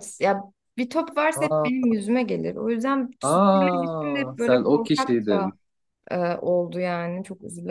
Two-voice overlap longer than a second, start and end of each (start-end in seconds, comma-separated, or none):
3.3-5.5